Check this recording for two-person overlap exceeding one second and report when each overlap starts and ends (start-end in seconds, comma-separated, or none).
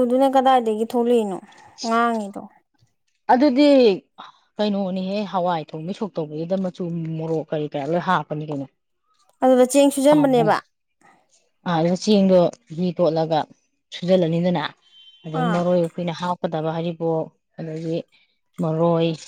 none